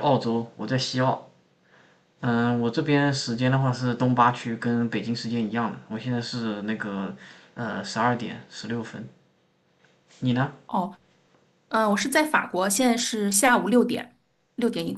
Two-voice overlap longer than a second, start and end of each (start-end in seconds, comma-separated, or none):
none